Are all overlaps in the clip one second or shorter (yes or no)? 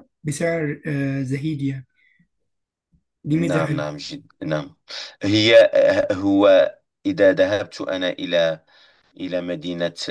yes